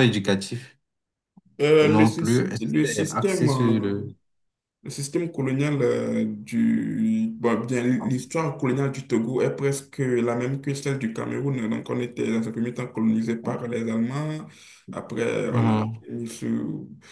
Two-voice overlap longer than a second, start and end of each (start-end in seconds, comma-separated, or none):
1.8-4.0